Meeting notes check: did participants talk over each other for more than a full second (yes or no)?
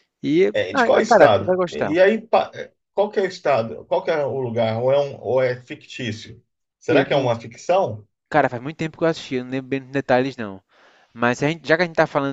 yes